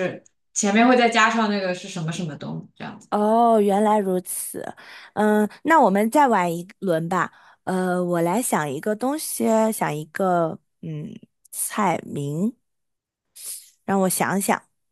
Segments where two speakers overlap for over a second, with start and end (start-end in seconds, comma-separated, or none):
none